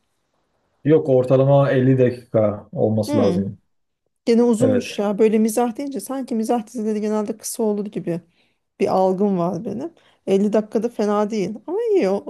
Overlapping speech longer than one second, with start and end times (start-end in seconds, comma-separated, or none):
none